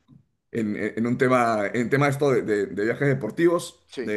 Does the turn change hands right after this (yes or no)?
no